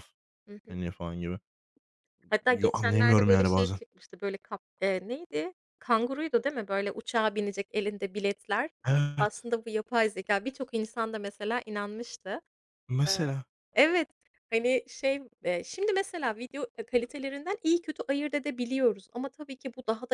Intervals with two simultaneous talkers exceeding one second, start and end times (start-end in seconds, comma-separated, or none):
2.5-3.8